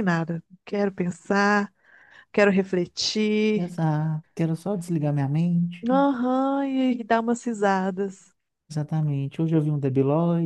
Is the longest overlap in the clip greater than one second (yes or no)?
no